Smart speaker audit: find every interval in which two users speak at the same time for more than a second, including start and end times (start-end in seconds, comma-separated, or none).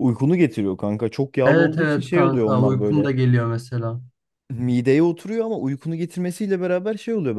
1.4-3.1